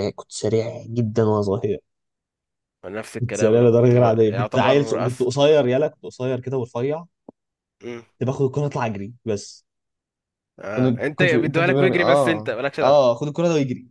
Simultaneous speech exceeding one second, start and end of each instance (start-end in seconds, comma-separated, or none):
3.2-5.3, 10.8-13.0